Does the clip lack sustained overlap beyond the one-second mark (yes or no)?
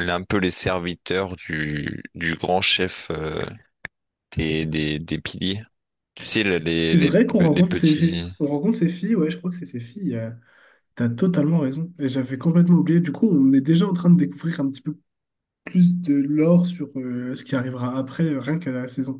no